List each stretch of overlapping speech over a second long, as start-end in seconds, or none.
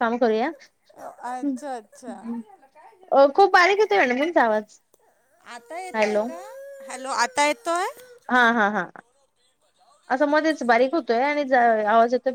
none